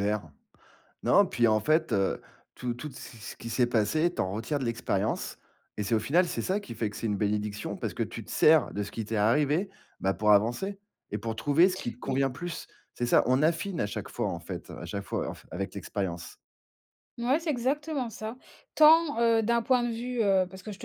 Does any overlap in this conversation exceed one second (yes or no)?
no